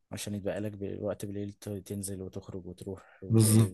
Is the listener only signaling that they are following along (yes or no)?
no